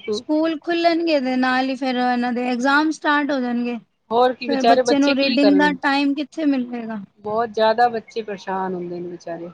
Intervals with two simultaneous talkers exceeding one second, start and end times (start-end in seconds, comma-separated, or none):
4.1-5.8